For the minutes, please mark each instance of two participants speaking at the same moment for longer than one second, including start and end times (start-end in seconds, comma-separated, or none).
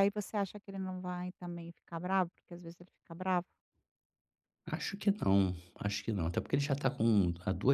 none